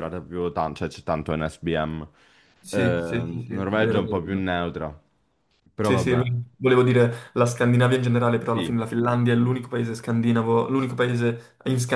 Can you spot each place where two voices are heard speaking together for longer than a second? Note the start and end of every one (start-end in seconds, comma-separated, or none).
2.7-4.4